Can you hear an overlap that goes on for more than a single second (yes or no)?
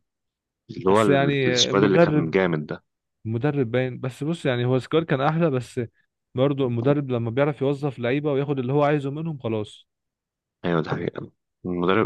yes